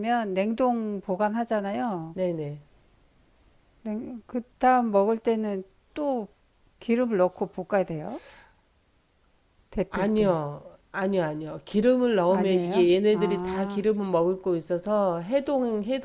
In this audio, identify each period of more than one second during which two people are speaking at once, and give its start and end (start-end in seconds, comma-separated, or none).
12.3-13.8